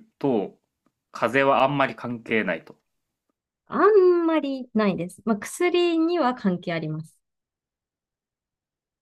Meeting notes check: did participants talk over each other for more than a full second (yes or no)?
no